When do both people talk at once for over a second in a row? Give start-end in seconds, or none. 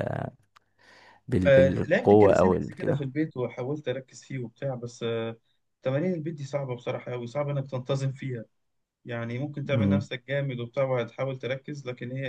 1.4-3.1